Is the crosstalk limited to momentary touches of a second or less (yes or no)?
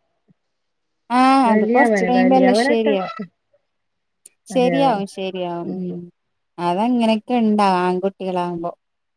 no